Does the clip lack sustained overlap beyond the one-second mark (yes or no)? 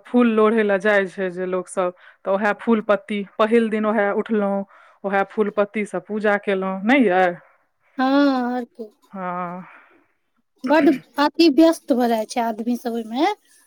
yes